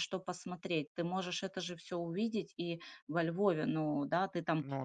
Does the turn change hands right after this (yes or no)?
no